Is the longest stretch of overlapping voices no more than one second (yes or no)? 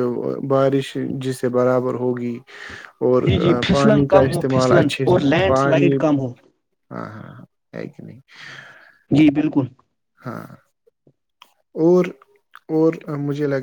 no